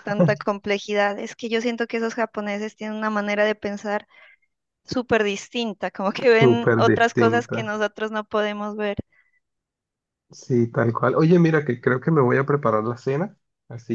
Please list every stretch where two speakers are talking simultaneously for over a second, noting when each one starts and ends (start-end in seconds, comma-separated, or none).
6.4-7.7